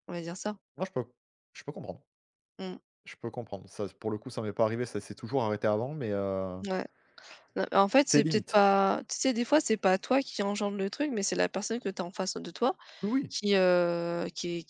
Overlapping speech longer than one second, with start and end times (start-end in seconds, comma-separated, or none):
none